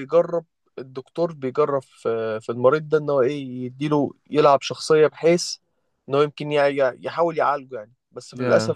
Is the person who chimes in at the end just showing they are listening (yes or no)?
yes